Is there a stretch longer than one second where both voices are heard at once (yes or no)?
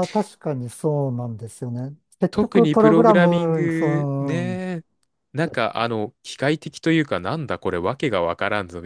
yes